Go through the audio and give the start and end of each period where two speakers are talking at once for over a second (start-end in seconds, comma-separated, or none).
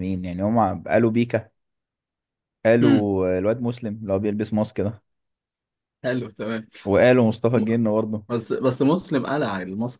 none